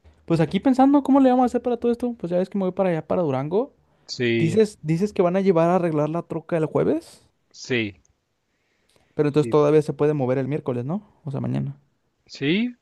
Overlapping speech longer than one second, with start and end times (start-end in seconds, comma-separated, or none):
none